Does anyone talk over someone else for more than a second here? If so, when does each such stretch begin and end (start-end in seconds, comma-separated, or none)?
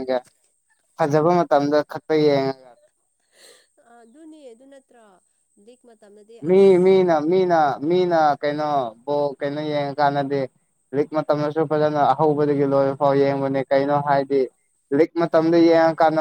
none